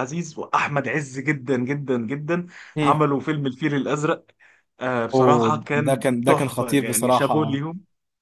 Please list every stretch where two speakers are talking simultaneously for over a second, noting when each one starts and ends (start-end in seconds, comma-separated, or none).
5.1-7.6